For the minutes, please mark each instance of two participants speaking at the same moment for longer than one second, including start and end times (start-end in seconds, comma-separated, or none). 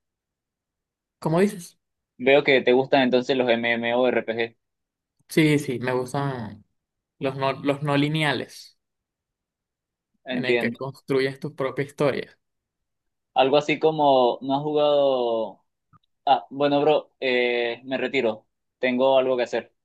none